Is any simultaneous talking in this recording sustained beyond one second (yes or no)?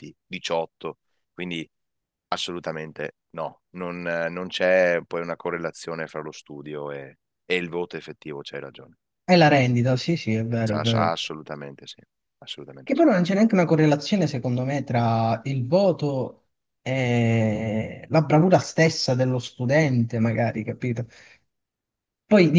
no